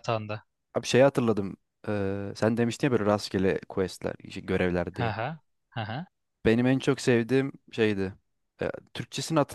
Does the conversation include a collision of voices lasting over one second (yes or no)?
no